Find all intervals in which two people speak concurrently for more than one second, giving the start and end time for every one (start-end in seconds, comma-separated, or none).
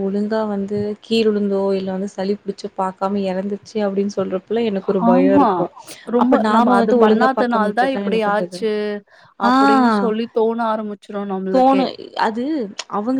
6.5-8.6